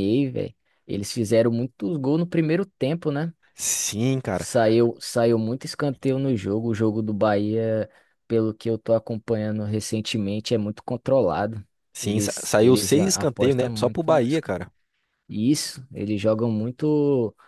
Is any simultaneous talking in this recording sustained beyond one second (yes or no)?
yes